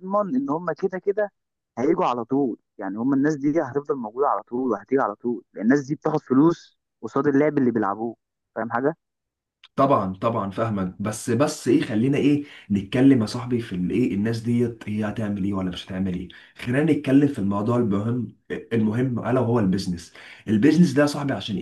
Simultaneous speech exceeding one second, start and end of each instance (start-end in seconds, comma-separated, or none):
none